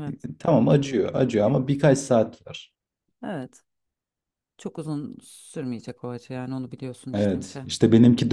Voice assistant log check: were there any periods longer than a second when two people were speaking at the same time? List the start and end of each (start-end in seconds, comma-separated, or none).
none